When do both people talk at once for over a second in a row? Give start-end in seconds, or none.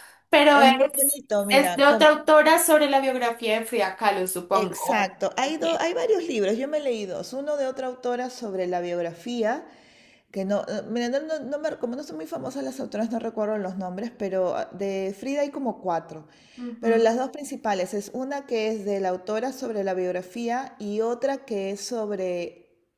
0.5-2.1